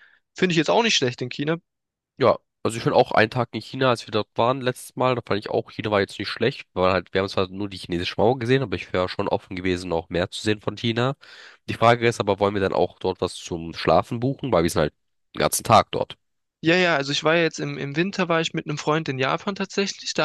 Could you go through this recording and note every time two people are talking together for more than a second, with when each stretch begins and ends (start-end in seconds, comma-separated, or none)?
none